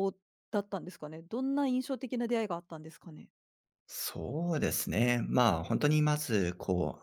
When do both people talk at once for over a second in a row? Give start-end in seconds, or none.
none